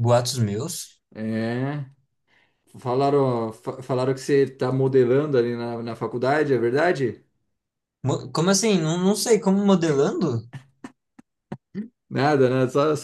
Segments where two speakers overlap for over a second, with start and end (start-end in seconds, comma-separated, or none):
none